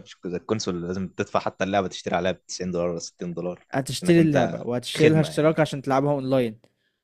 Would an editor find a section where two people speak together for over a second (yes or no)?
yes